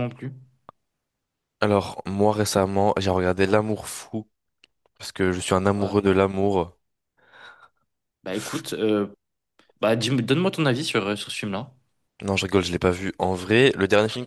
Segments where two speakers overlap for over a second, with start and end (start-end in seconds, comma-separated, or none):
none